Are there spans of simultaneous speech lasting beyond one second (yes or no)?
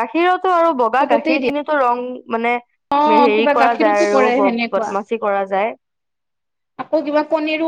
yes